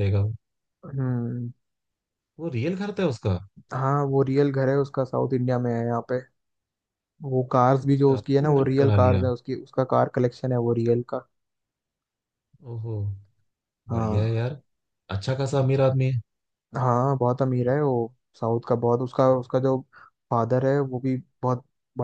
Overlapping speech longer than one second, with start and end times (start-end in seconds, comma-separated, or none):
7.8-9.2